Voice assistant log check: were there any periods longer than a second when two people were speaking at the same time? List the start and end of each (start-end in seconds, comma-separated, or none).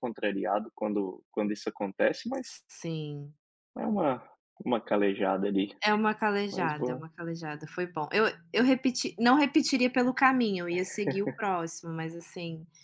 none